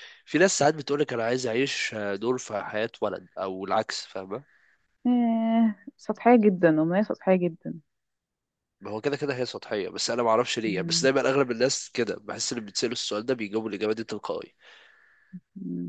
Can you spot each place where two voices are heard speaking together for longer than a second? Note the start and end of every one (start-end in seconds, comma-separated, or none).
none